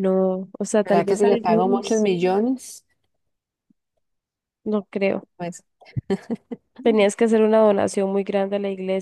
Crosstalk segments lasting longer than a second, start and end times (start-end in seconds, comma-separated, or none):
0.8-2.1